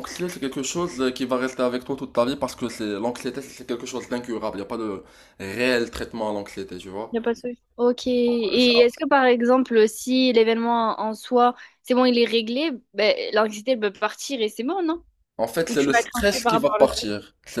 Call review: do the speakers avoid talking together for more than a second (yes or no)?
no